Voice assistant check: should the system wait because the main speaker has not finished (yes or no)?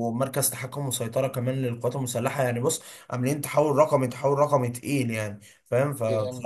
yes